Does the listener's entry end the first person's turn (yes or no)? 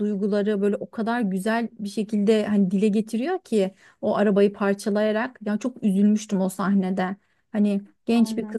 no